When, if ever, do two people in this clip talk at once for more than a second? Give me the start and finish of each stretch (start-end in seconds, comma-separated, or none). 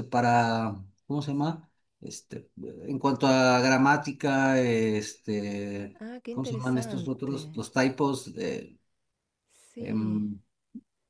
6.0-7.6